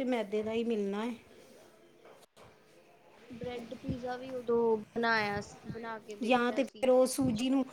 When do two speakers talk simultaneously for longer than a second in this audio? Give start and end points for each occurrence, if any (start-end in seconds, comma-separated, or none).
none